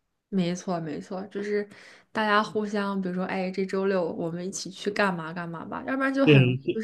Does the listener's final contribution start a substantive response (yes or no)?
yes